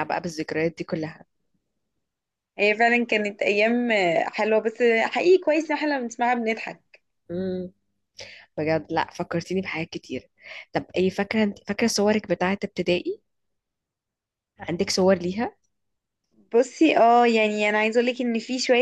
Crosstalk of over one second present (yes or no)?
no